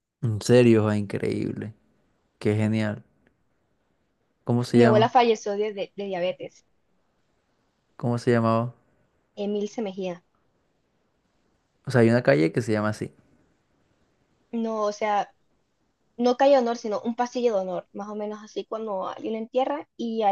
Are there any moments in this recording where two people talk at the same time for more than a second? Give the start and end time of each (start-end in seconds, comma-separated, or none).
none